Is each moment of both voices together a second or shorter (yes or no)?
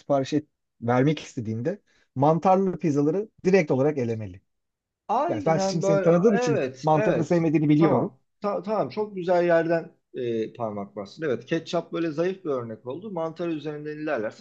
no